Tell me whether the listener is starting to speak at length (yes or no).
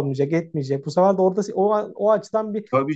yes